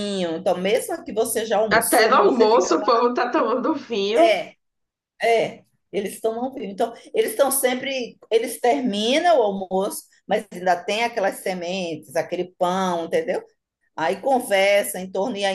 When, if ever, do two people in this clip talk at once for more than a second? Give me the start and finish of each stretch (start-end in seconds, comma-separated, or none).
1.7-2.9